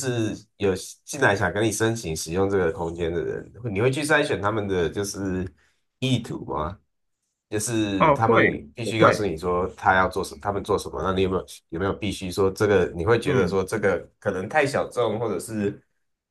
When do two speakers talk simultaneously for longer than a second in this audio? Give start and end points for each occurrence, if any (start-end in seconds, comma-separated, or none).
8.0-9.3